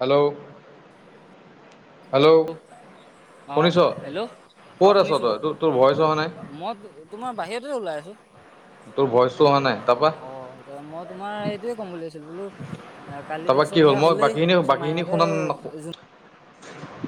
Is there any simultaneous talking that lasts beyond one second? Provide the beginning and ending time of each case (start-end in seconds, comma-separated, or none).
13.4-15.2